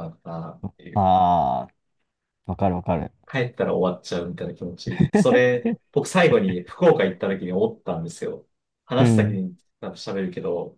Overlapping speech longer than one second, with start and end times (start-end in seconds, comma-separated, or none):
none